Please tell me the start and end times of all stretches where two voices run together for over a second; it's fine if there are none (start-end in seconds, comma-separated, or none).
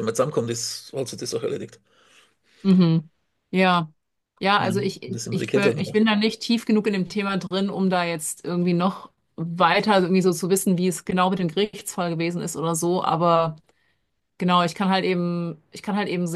4.5-6.0